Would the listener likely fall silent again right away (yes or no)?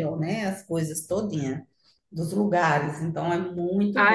no